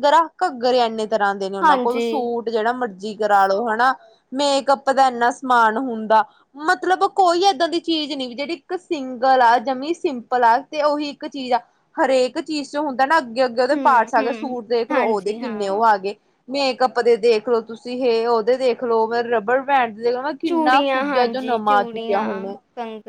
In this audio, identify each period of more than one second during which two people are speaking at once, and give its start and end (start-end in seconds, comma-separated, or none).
13.7-15.7, 20.5-22.2